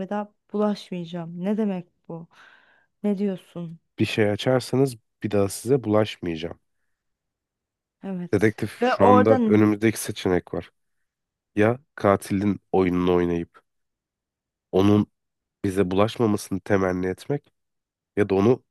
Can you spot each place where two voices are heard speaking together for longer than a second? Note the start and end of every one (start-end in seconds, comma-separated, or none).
8.3-9.7